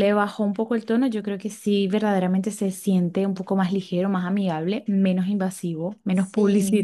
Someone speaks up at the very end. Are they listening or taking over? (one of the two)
taking over